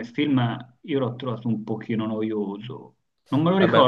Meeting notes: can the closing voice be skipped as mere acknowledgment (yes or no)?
yes